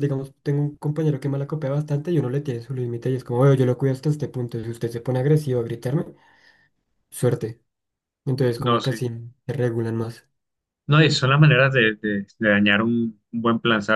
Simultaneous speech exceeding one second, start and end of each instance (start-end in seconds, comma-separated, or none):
none